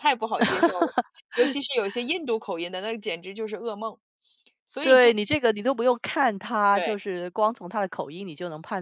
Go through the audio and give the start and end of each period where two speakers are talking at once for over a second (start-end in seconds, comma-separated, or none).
none